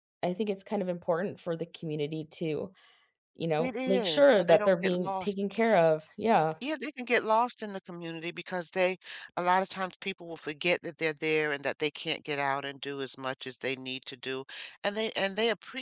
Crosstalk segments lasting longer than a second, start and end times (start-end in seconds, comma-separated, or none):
3.6-5.4